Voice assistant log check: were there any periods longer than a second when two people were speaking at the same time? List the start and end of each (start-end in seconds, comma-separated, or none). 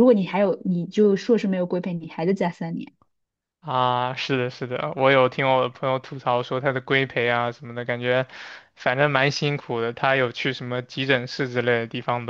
none